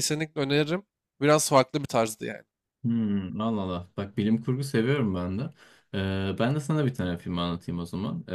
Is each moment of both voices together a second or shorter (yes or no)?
yes